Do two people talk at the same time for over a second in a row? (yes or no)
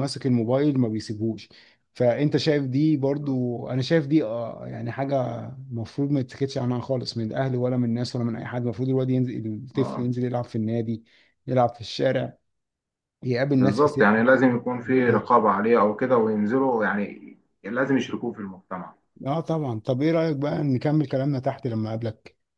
yes